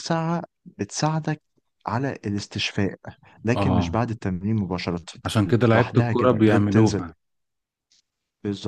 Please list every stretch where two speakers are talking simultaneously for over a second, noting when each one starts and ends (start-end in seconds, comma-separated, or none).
5.7-7.1